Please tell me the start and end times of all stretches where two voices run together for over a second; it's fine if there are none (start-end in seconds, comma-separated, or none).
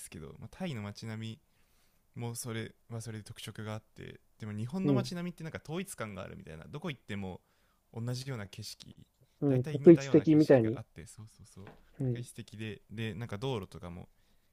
9.5-10.8